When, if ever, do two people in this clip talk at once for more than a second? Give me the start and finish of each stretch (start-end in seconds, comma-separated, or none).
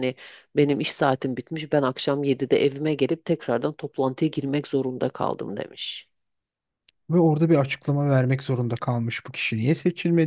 none